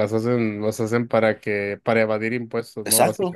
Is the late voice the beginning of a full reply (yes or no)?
yes